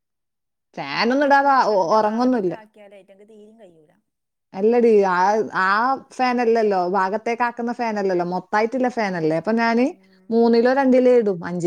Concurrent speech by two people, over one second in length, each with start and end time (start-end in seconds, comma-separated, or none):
0.9-2.5